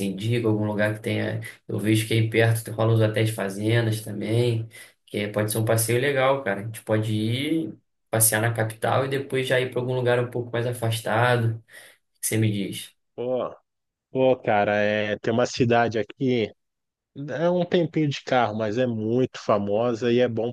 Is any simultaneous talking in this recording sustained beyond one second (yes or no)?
no